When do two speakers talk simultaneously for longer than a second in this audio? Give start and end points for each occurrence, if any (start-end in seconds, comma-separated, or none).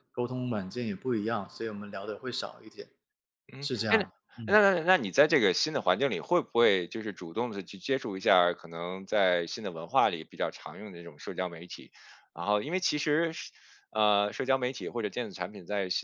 none